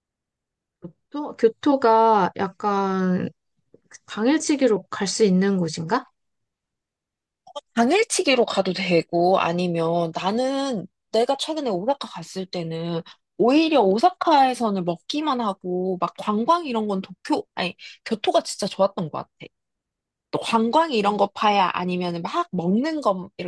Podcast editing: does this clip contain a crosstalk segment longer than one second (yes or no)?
no